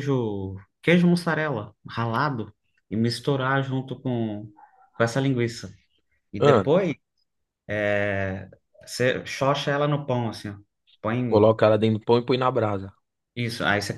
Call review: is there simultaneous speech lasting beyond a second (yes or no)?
no